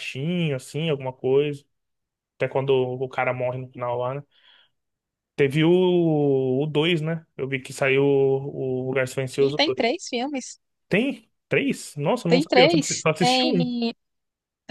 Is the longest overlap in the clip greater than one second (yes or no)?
yes